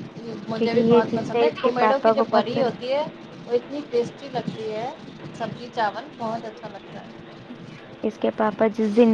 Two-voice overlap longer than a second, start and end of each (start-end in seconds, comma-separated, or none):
0.6-2.7